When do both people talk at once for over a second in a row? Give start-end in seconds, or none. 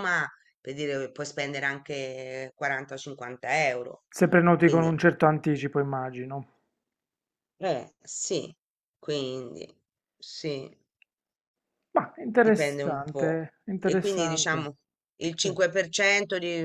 12.4-14.7